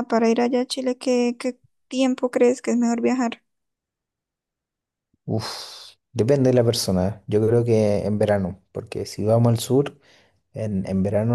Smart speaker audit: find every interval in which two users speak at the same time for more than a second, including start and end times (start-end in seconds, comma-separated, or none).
none